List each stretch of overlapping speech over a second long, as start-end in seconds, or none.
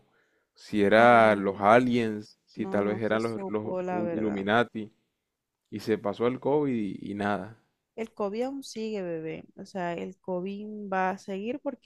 2.5-4.4